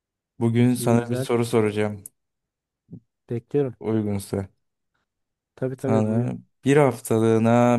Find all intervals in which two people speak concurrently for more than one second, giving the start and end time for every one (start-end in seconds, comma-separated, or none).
none